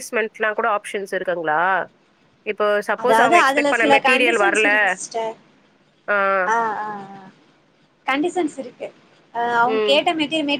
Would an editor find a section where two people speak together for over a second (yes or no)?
yes